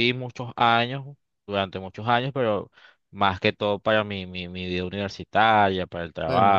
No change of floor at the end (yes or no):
no